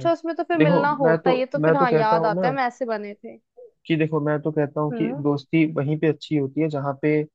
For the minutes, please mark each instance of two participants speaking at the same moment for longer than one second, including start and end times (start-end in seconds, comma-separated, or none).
0.6-2.5